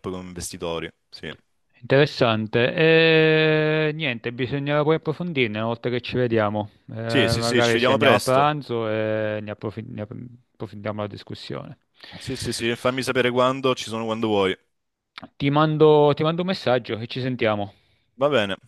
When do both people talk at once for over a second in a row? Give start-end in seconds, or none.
7.1-8.5